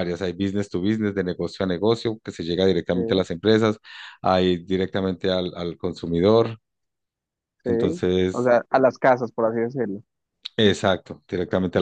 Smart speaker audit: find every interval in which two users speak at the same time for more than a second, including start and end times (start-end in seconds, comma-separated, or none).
none